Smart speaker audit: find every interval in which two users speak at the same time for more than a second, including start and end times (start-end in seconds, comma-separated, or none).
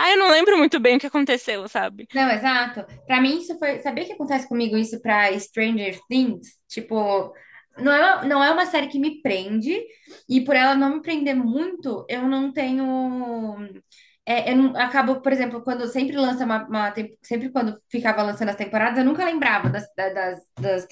none